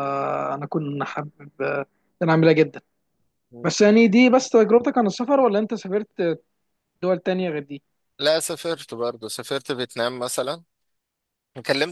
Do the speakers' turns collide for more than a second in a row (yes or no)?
no